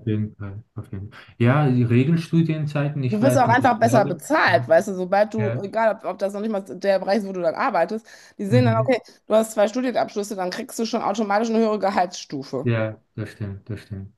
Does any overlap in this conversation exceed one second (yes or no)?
yes